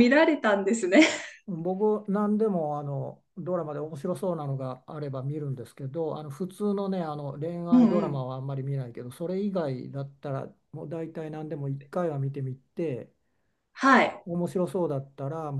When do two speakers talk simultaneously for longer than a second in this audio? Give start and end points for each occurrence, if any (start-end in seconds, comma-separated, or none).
none